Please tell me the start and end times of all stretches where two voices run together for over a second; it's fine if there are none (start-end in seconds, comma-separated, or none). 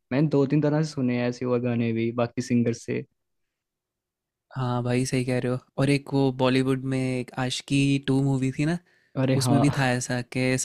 none